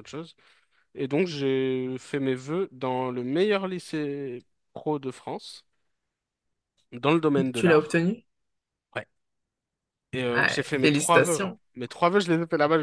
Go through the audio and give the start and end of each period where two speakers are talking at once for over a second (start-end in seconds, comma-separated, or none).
10.3-11.6